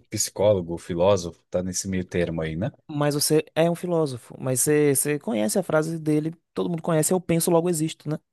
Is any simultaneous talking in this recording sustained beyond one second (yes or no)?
no